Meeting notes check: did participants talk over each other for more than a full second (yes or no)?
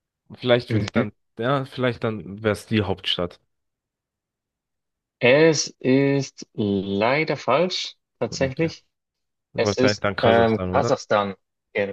yes